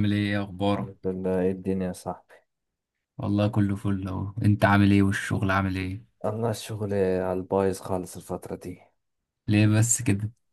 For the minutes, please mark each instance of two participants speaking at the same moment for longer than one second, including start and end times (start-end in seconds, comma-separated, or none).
none